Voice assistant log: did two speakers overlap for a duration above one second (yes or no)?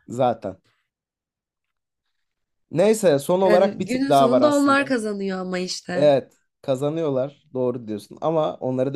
yes